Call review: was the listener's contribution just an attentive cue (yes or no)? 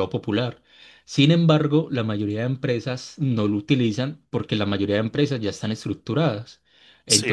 yes